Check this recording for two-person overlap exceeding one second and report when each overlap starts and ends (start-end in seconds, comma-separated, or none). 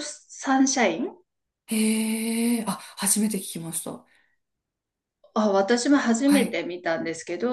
none